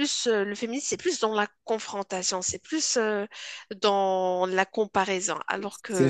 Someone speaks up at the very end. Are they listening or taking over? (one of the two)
taking over